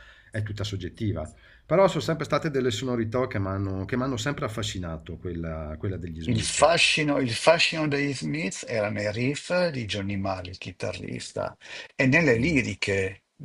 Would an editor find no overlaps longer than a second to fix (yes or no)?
yes